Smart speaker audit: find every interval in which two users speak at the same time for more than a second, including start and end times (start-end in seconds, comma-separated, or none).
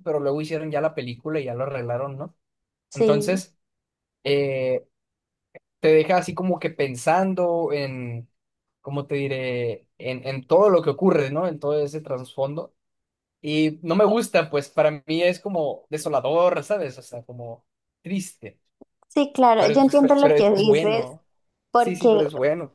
19.6-21.1